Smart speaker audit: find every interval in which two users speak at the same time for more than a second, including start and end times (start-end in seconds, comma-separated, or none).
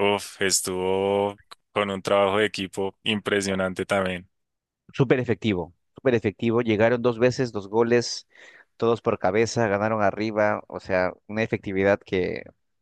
none